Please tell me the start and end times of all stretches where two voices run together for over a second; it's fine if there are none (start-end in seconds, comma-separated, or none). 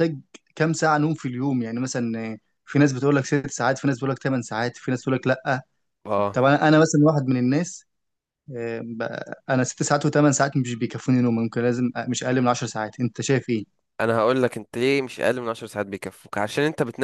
none